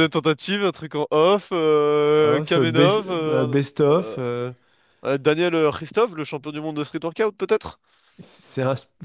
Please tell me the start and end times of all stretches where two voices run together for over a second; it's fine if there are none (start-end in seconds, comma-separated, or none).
2.2-4.2